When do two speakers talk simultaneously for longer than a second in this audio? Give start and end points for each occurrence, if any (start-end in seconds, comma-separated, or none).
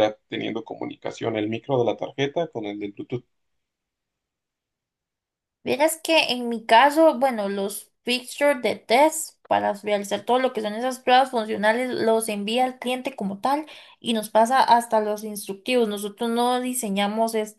none